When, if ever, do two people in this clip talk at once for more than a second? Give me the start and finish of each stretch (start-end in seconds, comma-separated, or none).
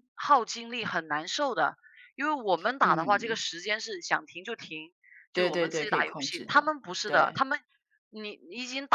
5.3-7.4